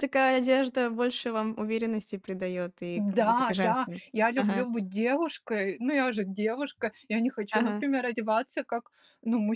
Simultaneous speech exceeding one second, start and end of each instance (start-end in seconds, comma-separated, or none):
3.0-4.7